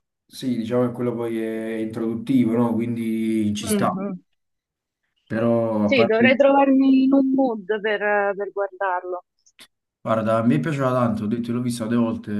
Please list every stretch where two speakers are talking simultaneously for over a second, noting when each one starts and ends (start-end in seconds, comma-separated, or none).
none